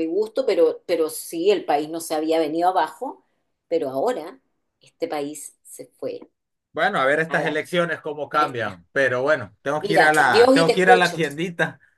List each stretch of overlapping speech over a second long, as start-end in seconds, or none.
9.8-11.2